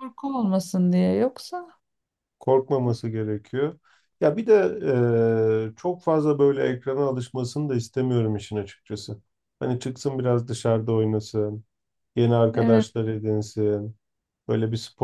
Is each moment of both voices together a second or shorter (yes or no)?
yes